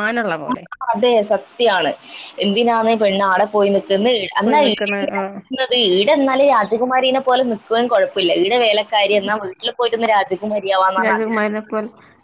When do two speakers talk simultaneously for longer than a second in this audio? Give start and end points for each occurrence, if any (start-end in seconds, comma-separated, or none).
none